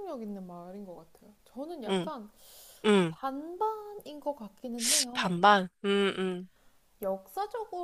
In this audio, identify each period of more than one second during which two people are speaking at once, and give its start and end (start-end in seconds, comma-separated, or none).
none